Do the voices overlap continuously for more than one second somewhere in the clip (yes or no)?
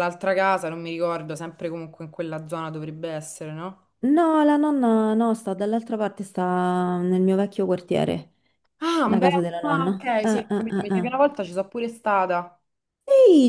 yes